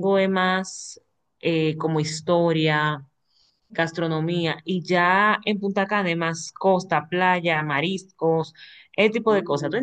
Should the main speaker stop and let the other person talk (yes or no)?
yes